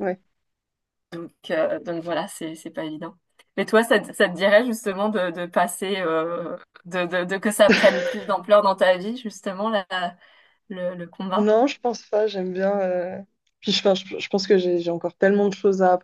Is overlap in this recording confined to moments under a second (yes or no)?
yes